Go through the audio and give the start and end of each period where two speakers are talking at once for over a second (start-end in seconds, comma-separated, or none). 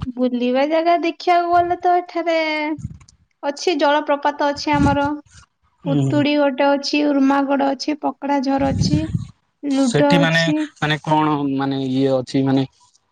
none